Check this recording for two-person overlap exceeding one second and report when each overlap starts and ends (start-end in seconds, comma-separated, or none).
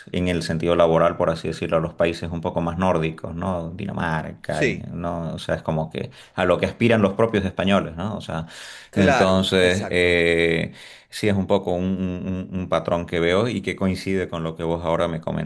8.9-10.2